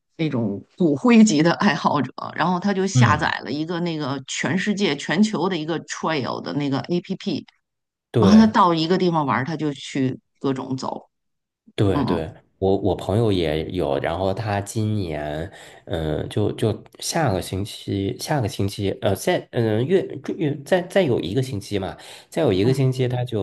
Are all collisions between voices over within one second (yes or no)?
yes